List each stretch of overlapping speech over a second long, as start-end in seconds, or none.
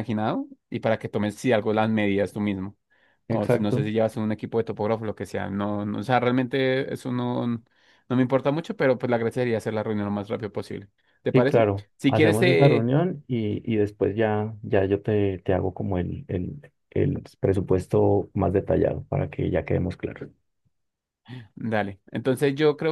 11.3-12.9